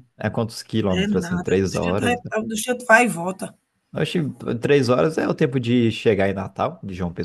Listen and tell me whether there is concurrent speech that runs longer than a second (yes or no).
yes